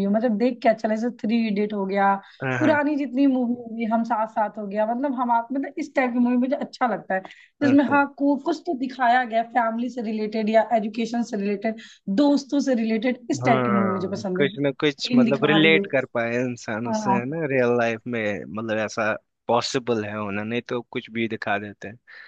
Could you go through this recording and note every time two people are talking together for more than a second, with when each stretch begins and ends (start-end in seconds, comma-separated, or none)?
13.3-15.9